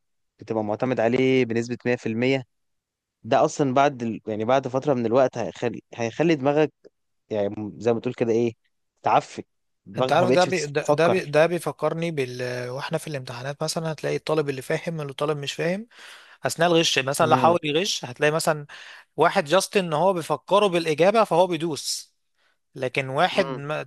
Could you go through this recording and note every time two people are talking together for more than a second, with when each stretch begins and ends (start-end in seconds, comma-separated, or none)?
10.0-11.3